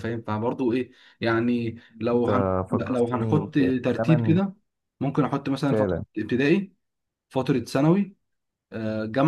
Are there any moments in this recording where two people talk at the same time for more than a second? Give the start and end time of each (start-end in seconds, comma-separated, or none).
2.1-4.3